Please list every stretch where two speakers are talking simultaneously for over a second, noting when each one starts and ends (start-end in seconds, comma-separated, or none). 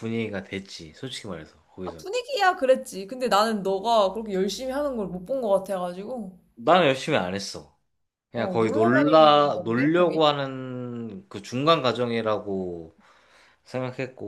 8.3-10.2